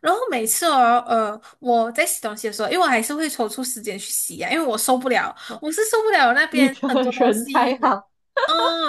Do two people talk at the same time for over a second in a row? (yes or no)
yes